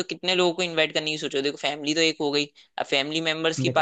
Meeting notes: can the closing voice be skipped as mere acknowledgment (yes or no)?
yes